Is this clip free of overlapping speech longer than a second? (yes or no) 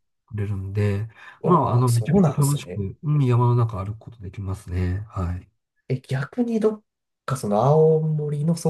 no